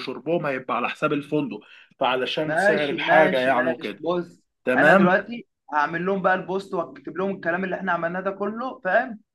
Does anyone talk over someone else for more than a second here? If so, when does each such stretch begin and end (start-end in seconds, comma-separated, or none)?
2.4-4.0